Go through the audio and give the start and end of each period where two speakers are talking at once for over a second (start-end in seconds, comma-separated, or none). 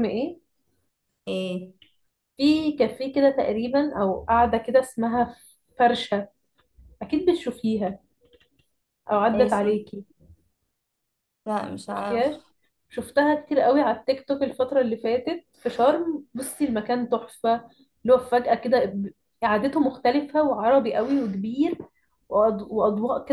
none